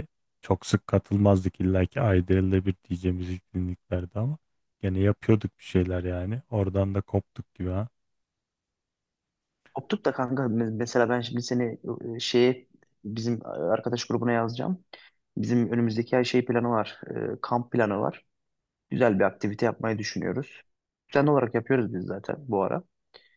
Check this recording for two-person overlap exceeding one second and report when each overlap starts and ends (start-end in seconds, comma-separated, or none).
none